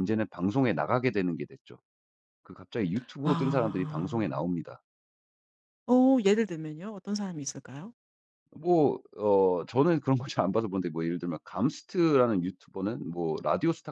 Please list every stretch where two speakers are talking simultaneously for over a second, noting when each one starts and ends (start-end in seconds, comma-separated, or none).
3.2-4.5